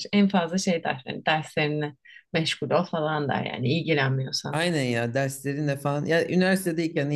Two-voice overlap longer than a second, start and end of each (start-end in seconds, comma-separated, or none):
none